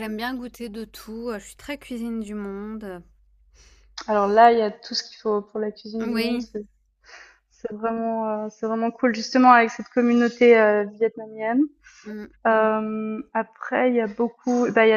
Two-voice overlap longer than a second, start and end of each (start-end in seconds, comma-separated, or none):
none